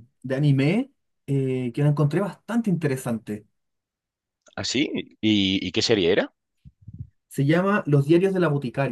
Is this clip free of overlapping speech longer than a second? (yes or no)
yes